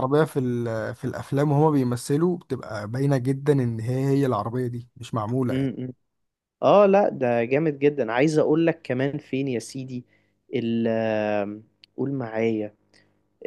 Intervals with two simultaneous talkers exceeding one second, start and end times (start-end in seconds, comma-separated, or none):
none